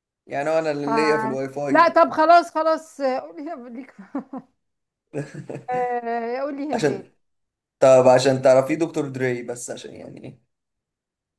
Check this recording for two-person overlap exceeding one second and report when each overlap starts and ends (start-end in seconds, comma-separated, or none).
none